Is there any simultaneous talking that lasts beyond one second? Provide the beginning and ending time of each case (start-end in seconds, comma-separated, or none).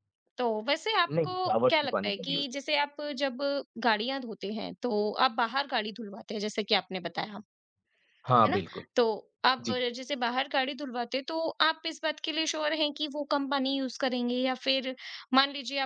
1.1-2.8